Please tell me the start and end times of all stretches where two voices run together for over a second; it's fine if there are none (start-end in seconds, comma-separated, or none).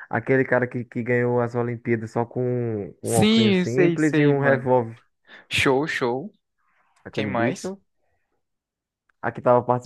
3.0-4.7